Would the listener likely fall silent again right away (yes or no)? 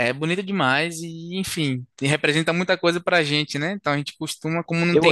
no